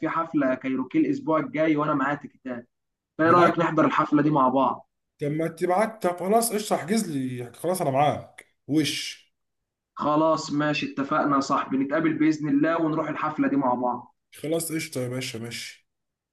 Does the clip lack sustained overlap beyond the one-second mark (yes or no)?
yes